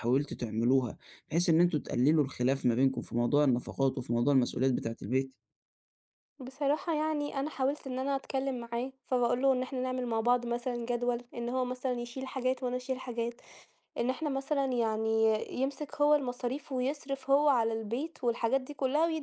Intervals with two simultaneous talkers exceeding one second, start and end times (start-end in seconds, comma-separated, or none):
none